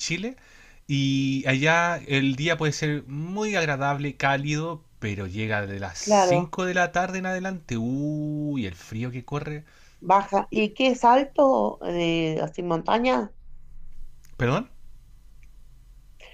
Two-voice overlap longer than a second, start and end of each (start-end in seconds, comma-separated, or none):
none